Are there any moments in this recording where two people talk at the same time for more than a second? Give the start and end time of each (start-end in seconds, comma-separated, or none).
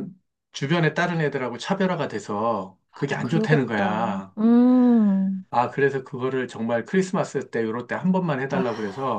2.9-4.3